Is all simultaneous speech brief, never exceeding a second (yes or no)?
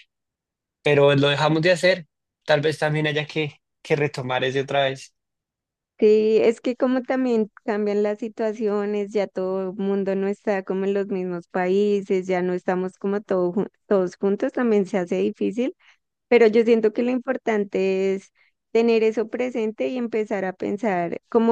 yes